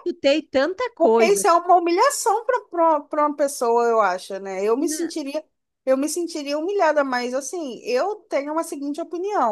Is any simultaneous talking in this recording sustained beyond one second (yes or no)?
no